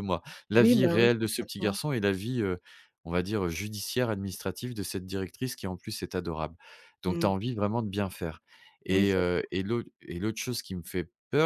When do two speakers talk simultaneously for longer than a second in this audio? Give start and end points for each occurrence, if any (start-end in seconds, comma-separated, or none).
0.5-1.8